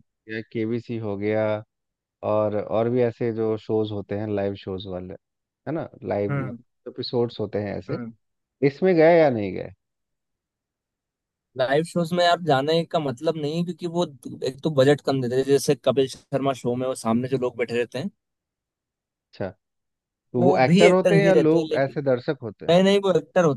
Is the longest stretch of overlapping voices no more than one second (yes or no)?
no